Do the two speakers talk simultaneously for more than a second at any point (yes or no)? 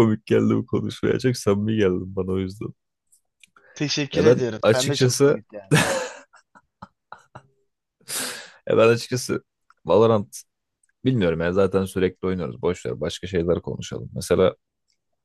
yes